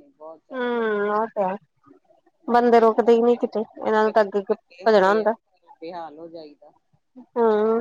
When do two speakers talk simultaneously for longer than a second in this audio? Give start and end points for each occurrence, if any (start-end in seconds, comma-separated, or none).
3.9-5.3